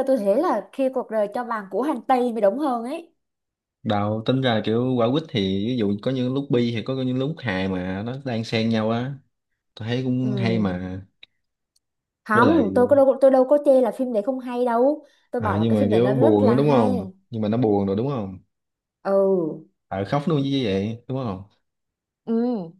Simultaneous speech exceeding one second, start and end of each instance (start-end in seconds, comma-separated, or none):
15.4-16.9